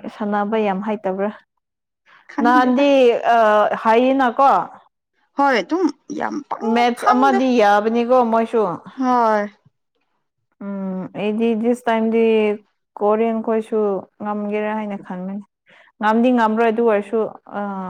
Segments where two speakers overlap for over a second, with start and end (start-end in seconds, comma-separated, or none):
none